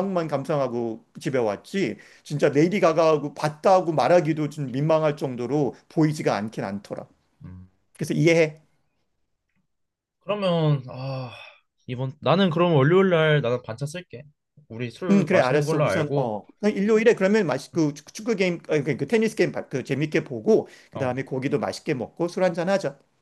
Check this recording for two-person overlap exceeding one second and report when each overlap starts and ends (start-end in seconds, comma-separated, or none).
15.1-16.3